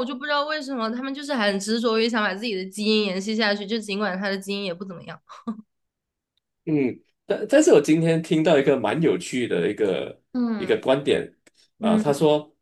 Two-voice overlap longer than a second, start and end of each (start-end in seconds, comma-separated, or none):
none